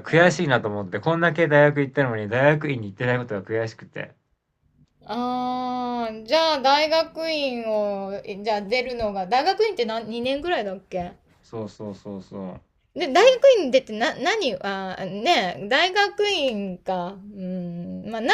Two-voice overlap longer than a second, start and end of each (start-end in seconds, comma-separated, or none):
none